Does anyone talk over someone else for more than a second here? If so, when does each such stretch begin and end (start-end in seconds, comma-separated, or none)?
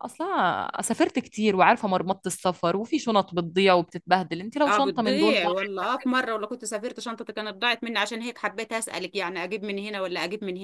4.7-5.9